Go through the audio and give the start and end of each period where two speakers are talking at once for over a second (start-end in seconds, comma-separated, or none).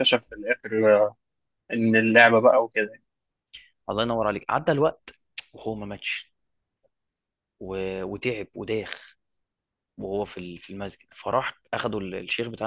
none